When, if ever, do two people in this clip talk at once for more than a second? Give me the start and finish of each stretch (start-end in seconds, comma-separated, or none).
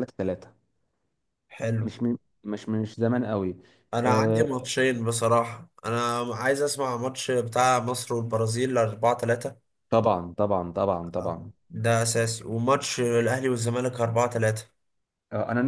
none